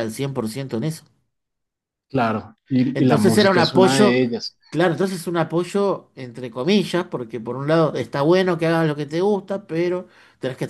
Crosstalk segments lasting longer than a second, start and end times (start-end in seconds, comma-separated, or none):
2.9-4.2